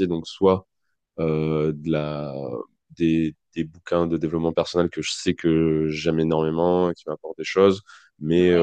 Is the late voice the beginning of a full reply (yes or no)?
no